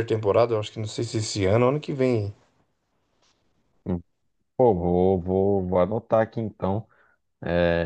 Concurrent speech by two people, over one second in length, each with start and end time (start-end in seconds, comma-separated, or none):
none